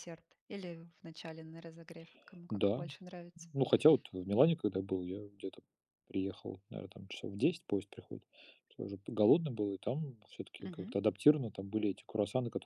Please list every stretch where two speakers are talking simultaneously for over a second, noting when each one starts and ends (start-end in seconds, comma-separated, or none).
none